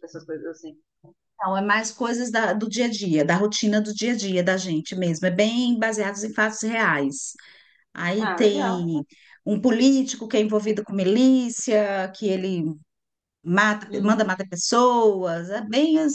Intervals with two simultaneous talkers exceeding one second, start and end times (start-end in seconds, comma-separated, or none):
none